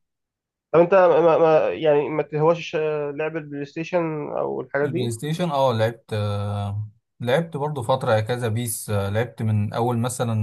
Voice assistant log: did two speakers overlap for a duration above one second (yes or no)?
no